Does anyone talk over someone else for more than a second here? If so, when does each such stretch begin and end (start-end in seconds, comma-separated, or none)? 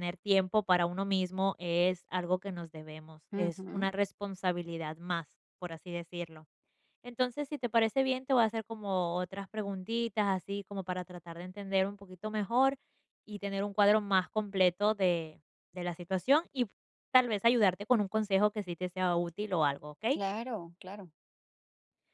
none